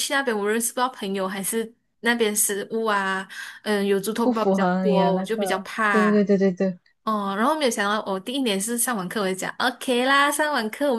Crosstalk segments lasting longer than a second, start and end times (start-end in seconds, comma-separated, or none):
4.2-6.1